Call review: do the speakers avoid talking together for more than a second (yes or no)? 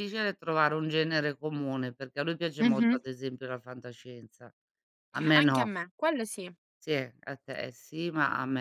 yes